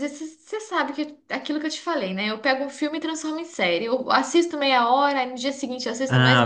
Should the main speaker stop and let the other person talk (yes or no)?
yes